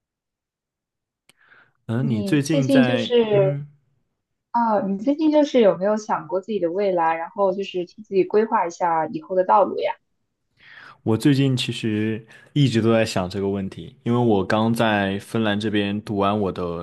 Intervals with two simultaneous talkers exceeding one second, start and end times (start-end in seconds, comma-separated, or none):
2.0-3.6